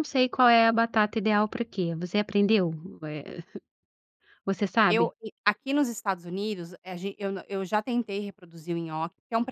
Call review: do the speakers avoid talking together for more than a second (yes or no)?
yes